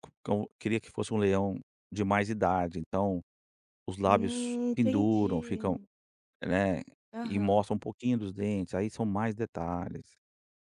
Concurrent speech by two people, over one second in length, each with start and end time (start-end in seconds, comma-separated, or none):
4.0-5.8